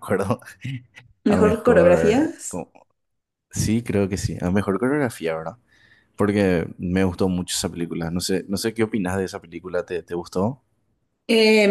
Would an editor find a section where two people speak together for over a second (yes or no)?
yes